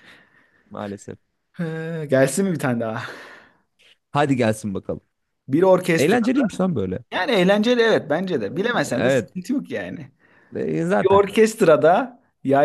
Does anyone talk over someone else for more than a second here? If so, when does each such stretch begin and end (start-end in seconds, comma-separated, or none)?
none